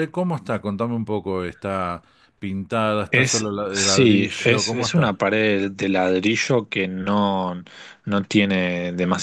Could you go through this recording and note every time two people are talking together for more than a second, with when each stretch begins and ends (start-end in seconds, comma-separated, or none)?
3.1-5.1